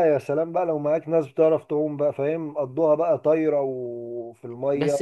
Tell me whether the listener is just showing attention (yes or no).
no